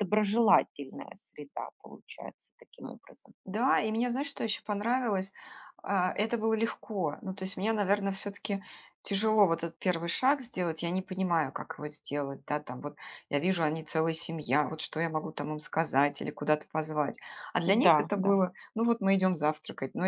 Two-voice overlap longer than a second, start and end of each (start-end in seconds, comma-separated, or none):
none